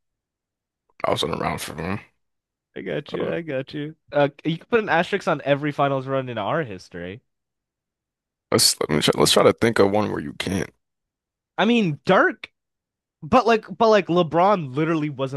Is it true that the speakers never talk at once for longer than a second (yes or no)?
yes